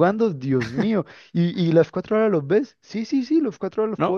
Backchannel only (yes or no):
no